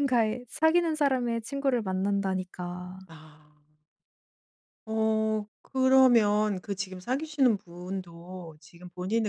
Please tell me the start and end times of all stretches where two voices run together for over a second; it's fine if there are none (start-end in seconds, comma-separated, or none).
none